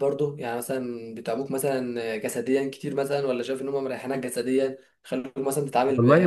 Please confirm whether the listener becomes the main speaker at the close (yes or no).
yes